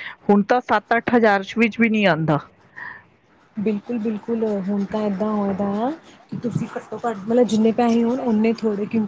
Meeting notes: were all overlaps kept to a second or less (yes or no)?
yes